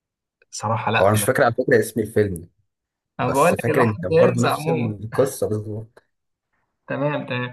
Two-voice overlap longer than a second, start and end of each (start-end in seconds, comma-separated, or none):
3.2-5.0